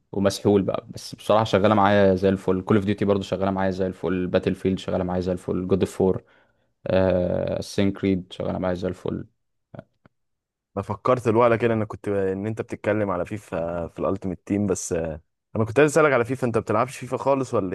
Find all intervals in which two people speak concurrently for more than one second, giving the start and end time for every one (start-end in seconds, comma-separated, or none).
none